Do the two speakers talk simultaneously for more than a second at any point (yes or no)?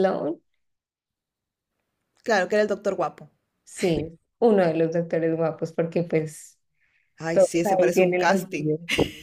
yes